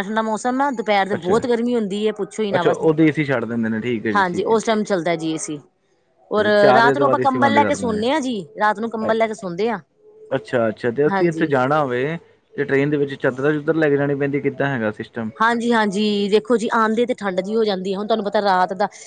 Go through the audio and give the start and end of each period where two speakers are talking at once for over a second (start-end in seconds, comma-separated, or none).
6.6-8.0